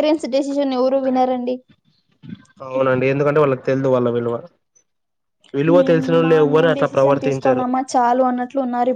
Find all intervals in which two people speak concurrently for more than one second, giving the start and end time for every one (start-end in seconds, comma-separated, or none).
5.8-7.7